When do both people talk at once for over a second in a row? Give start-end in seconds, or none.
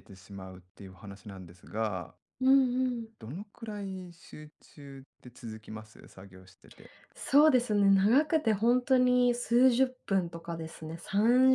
none